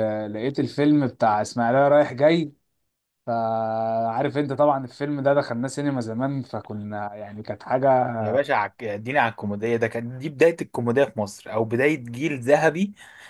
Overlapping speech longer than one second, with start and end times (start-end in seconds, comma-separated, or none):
none